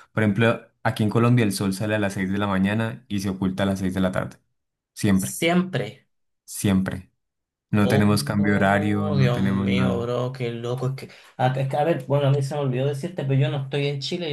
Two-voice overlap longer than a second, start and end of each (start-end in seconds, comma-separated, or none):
7.8-10.1